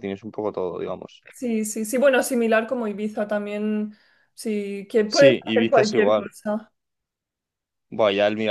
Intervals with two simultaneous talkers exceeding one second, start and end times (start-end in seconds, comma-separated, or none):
5.0-6.3